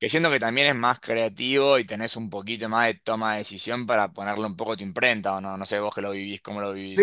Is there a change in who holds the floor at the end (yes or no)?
yes